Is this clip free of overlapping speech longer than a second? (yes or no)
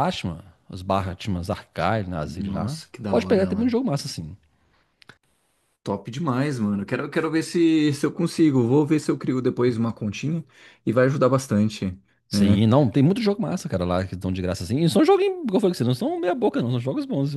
no